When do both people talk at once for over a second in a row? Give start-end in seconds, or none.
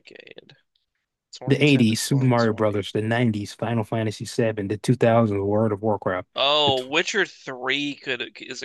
1.5-2.7